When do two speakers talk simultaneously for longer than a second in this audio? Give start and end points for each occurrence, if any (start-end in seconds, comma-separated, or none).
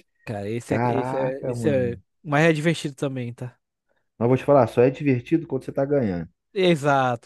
0.7-2.0